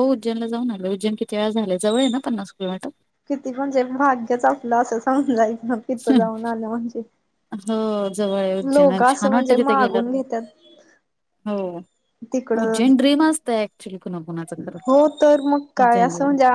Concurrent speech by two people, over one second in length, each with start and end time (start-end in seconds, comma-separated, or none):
8.7-10.1